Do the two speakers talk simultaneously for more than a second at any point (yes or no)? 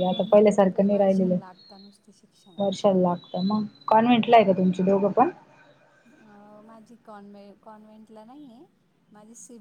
no